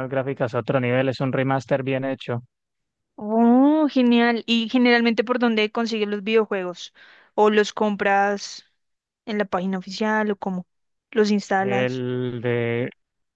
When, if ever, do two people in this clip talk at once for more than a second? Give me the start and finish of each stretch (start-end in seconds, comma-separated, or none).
none